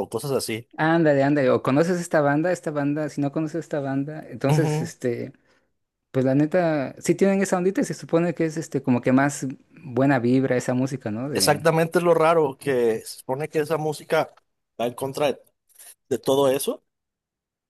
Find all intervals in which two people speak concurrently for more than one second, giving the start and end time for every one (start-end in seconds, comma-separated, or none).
none